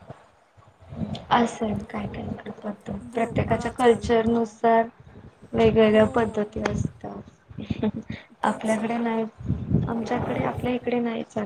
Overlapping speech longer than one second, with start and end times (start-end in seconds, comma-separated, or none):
3.1-4.4